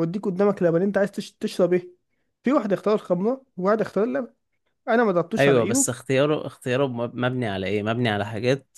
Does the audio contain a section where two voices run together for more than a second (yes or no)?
no